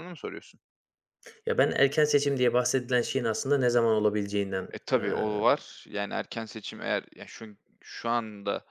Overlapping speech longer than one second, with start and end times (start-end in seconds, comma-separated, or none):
none